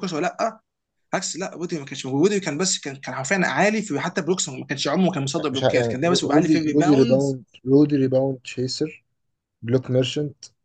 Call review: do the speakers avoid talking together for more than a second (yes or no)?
no